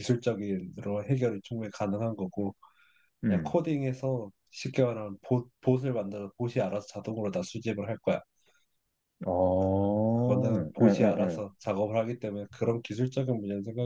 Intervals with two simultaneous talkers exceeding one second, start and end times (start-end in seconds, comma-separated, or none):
10.1-11.4